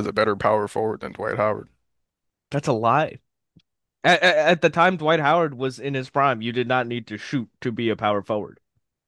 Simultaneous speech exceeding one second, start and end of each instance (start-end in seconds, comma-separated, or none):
none